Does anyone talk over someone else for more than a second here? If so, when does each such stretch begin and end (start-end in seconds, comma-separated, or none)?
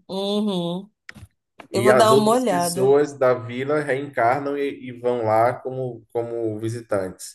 1.7-3.0